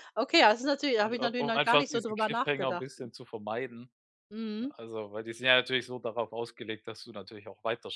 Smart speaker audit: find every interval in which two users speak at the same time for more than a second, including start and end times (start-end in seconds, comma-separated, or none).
1.0-2.9